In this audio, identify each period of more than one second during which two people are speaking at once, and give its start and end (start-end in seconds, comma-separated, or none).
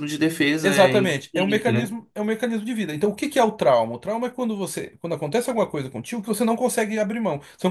0.6-2.0